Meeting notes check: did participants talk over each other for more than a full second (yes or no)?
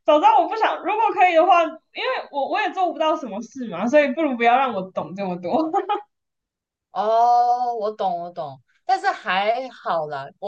no